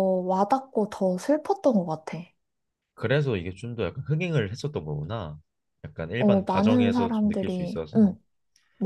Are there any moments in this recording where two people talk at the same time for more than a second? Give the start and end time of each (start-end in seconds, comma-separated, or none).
6.2-8.2